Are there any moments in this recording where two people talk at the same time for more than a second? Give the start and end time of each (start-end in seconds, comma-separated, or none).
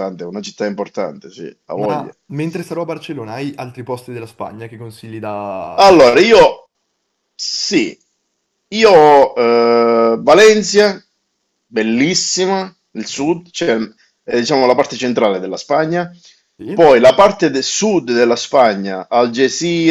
none